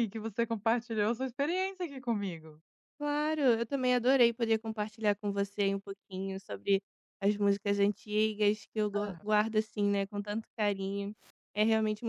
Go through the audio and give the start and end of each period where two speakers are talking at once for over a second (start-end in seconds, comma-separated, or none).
none